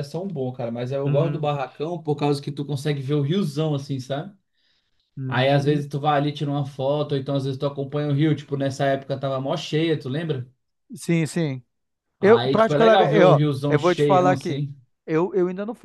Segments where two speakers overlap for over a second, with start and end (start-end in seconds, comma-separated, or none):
12.2-14.6